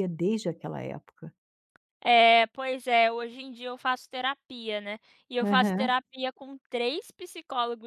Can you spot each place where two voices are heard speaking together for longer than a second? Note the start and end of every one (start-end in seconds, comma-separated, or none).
none